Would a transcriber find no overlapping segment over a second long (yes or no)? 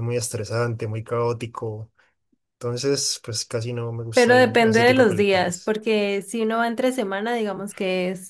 no